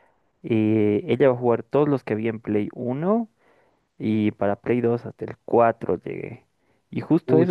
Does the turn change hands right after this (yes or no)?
no